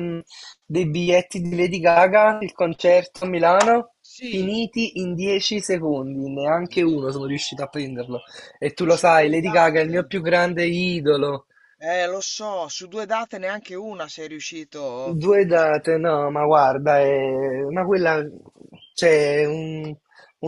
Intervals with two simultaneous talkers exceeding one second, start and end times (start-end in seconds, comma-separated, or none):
8.8-10.1